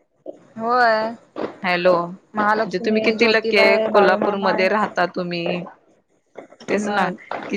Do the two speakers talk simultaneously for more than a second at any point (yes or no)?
yes